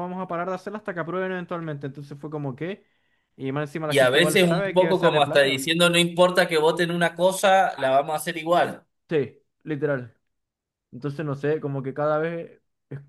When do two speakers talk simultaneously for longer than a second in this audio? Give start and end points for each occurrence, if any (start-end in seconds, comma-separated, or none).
3.9-5.6